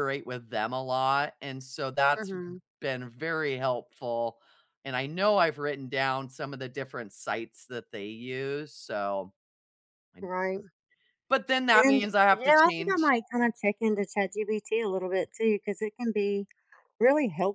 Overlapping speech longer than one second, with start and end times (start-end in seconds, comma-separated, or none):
11.7-13.1